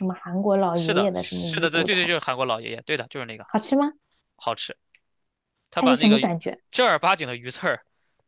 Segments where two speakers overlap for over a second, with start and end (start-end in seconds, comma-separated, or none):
0.7-2.1